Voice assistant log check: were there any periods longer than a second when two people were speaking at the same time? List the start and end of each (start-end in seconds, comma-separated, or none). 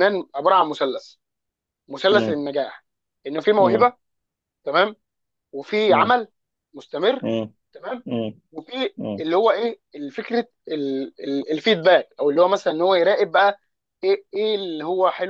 none